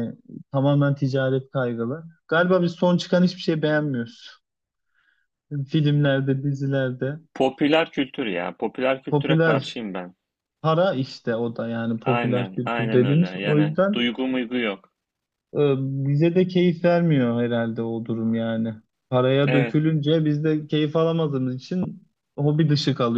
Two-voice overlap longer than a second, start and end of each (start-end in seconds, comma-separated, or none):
12.0-14.0